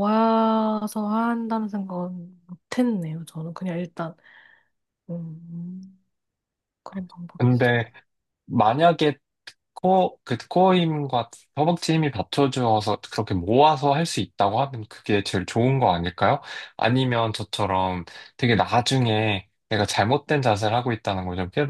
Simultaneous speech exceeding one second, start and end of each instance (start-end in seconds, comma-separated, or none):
none